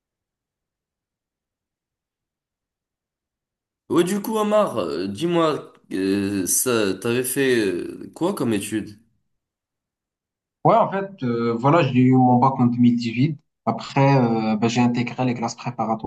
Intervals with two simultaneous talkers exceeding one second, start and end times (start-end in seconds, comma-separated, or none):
none